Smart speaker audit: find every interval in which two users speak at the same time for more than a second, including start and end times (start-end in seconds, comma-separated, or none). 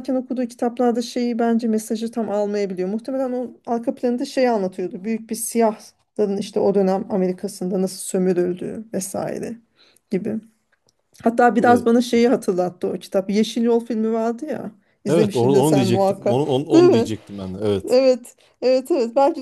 15.1-17.1